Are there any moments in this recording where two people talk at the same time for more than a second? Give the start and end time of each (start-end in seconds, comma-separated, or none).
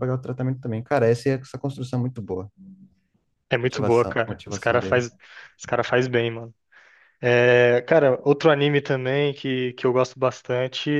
3.6-5.0